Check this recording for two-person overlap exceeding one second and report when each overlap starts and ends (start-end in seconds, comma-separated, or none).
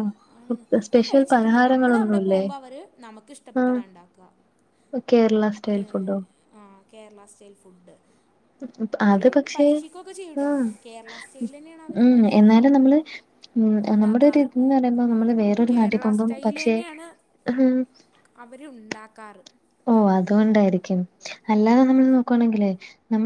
0.9-2.4